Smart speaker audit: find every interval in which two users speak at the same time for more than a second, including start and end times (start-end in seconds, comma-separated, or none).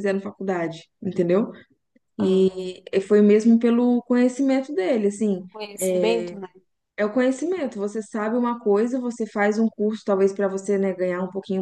none